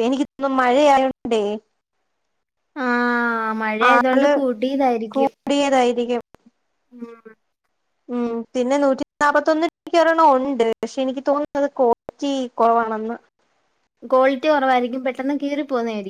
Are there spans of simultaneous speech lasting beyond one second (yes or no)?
no